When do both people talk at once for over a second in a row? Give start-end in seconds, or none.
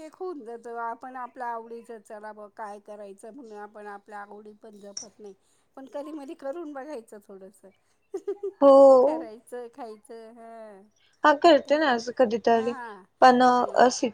none